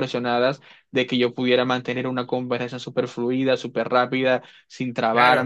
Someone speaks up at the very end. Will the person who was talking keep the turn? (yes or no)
no